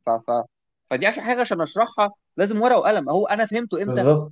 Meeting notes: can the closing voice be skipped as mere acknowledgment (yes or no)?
yes